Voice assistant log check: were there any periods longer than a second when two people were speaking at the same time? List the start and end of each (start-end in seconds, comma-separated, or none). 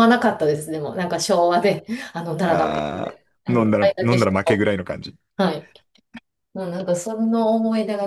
2.5-4.6